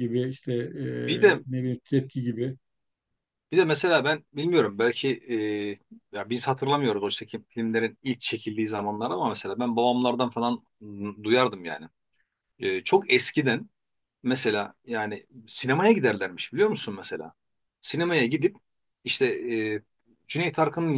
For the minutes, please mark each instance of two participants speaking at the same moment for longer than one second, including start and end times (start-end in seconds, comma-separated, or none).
none